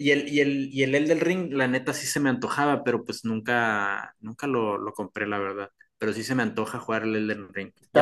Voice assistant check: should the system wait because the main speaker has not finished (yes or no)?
no